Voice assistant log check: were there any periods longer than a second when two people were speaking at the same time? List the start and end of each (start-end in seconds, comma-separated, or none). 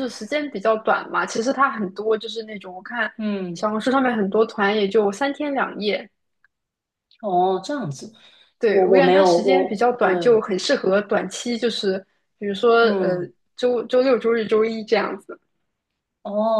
8.7-10.1